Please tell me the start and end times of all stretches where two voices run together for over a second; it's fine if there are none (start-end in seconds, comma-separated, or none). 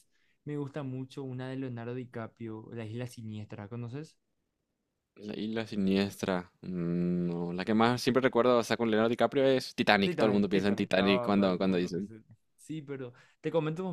10.0-12.1